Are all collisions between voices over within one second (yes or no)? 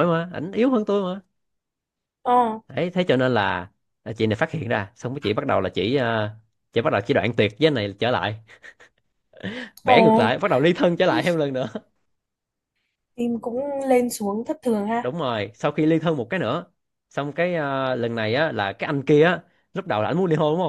yes